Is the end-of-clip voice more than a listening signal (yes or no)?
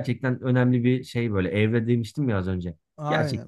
yes